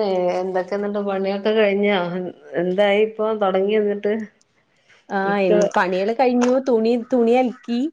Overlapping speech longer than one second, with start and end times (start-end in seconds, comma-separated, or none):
none